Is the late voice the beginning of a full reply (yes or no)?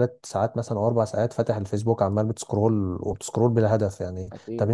no